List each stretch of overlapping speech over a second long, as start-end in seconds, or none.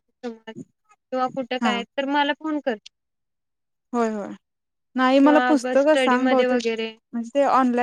5.2-6.9